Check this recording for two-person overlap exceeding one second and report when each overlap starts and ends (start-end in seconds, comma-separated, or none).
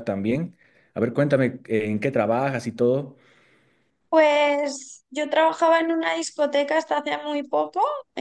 none